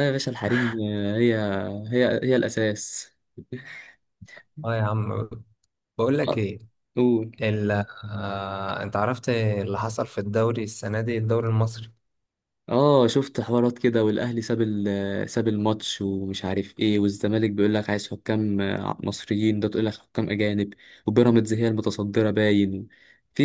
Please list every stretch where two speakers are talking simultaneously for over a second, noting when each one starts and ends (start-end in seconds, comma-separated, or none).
none